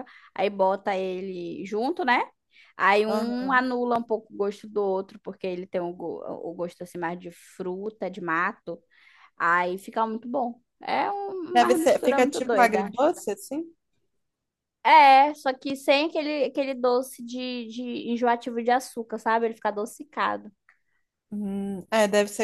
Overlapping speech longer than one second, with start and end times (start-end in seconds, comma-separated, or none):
11.5-12.9